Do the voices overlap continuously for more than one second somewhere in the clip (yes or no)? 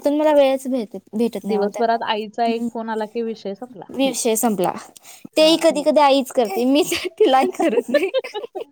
yes